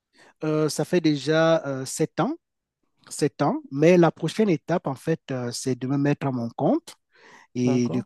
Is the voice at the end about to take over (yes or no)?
no